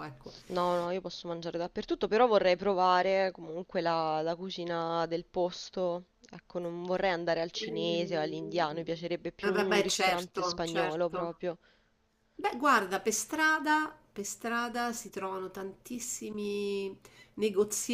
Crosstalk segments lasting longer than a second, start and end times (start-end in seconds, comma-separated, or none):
9.4-11.3